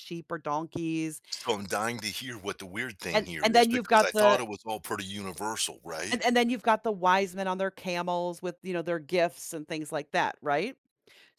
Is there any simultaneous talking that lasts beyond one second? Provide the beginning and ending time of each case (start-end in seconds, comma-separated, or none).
3.1-4.4